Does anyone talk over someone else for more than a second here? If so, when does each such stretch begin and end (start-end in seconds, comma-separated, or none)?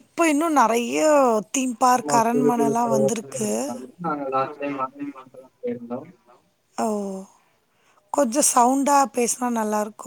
2.0-3.5